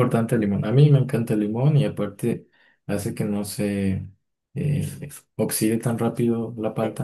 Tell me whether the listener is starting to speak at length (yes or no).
yes